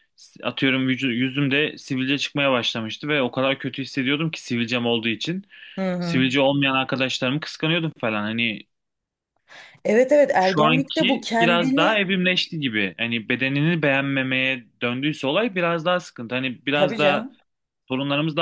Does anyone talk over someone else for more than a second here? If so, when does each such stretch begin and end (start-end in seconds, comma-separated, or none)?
10.4-12.0